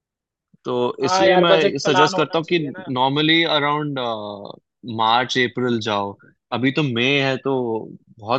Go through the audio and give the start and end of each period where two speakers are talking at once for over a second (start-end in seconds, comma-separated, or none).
1.0-2.6